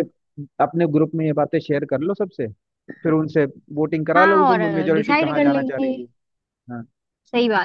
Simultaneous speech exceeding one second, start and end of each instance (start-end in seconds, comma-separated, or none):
4.2-5.9